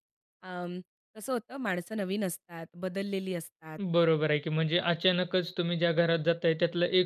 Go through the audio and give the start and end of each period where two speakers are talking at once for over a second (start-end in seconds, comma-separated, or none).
none